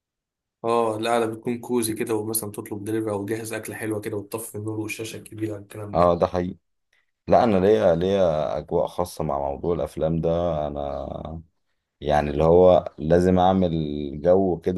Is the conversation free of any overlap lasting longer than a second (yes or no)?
yes